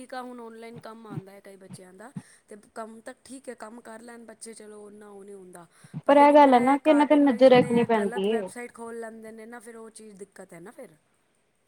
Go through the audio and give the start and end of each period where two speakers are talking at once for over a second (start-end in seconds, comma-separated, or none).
6.3-8.5